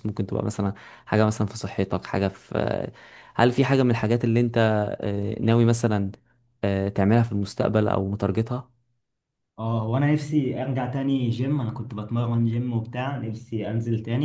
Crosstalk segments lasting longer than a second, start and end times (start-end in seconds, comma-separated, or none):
none